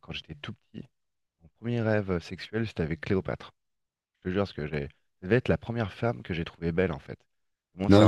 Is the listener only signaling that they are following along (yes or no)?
no